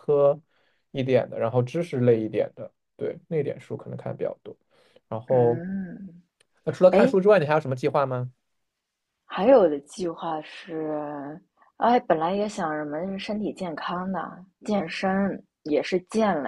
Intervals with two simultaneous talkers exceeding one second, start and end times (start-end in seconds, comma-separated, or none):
none